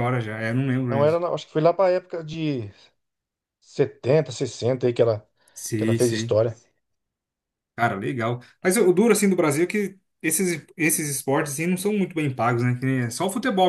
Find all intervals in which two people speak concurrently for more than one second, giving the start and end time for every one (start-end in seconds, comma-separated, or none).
none